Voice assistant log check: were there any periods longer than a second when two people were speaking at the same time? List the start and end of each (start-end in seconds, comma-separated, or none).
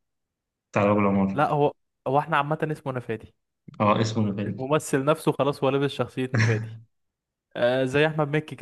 none